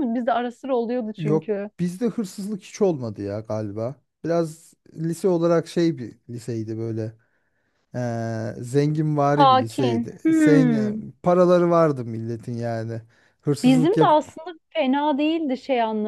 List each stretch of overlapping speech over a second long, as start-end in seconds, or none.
9.4-11.0